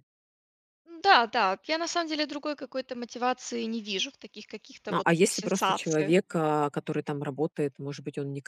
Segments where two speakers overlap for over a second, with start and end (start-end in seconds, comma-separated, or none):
4.9-6.1